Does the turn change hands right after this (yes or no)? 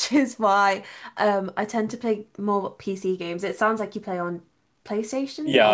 yes